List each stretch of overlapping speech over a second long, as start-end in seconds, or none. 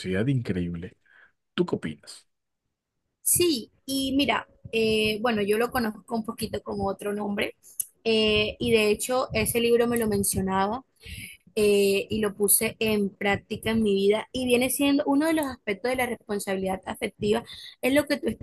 none